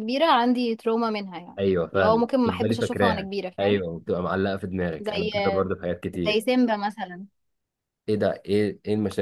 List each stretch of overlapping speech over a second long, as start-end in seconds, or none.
1.6-3.8